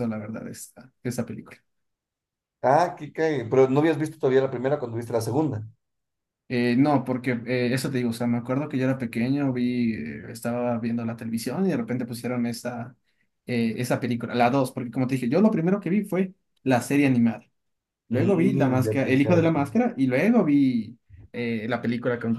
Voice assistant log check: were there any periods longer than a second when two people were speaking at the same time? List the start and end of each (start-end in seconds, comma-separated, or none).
18.1-19.5